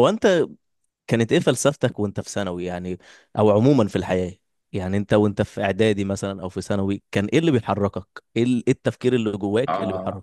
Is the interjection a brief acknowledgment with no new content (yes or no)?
no